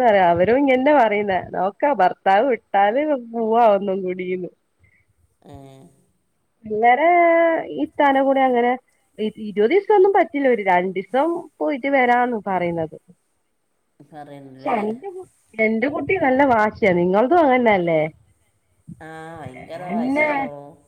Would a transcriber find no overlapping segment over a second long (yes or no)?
yes